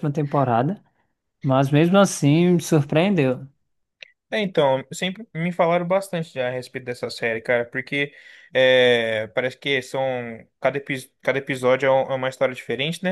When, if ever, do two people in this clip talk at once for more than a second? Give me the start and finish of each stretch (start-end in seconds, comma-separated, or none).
none